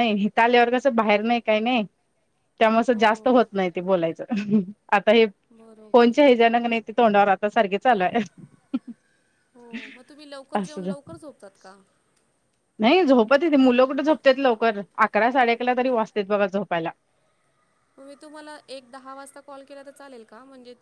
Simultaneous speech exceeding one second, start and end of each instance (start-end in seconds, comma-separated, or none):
none